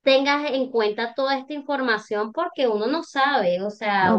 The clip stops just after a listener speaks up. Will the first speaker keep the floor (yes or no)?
no